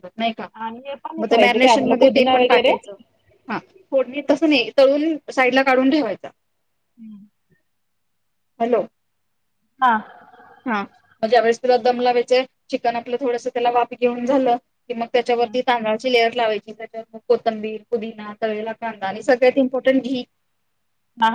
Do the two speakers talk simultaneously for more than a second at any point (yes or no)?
yes